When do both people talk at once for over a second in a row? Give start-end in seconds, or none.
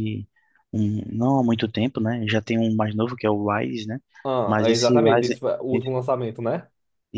4.5-5.9